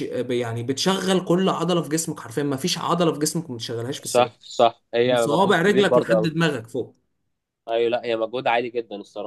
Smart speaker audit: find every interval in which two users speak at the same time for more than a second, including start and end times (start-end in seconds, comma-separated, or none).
5.1-6.3